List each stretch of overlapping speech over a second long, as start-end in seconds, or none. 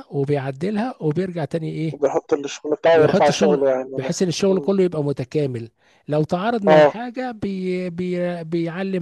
2.9-4.7